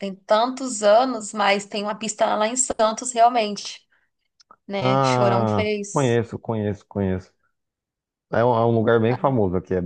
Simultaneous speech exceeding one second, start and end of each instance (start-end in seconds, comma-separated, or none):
4.8-6.2